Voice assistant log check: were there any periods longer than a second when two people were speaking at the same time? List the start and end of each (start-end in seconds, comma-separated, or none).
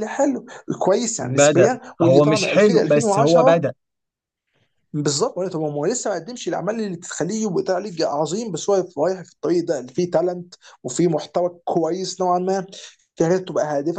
1.2-3.6